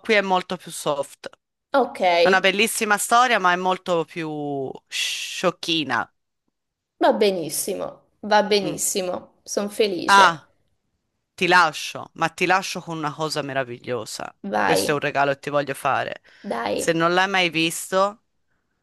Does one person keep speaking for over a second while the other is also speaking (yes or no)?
no